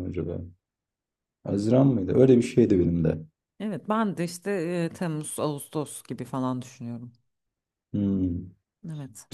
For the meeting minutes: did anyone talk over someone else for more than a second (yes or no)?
no